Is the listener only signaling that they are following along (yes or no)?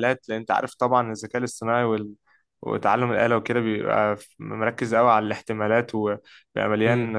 yes